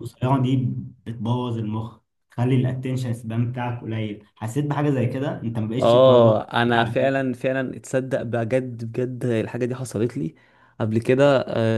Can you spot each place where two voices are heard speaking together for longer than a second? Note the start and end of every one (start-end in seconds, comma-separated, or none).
5.8-7.2